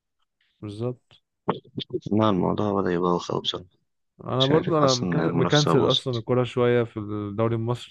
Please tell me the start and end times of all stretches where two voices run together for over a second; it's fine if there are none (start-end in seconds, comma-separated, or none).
4.4-6.2